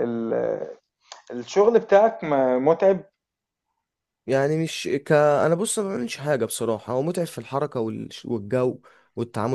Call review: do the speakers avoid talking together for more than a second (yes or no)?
yes